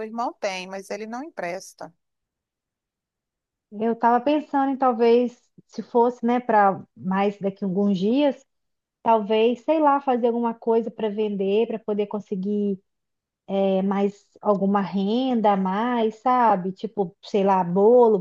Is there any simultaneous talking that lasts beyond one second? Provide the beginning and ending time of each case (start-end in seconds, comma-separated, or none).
none